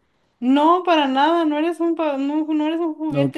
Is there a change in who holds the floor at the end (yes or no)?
yes